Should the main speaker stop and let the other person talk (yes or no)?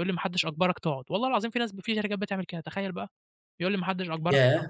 yes